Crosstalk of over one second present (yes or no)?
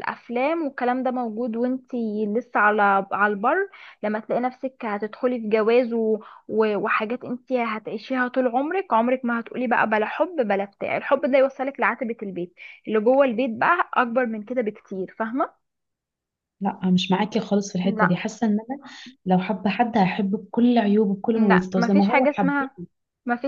yes